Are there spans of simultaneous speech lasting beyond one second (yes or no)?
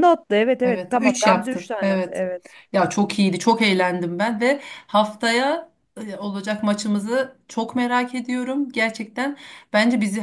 yes